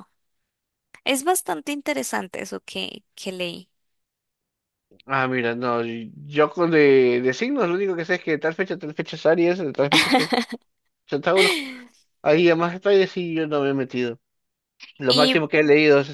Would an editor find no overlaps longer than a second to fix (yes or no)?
yes